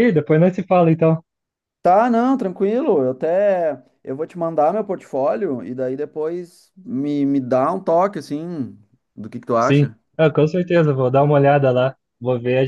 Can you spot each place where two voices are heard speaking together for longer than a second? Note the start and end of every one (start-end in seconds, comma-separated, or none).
none